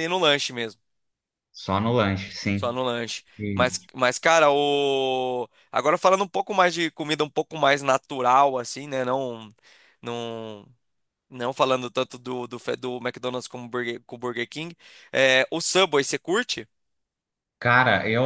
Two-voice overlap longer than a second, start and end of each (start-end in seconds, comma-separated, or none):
none